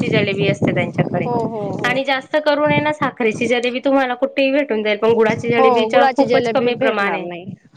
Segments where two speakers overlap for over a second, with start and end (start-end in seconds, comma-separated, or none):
5.6-7.3